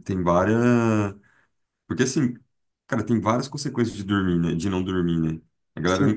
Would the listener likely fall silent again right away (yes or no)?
yes